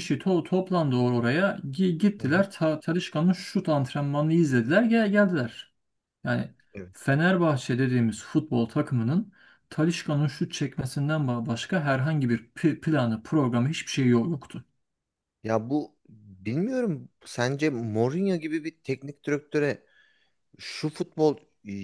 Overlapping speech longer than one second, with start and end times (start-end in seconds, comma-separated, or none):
none